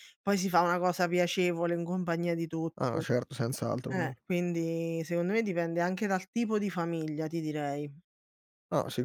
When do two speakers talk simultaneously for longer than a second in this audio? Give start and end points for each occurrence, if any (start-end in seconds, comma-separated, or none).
none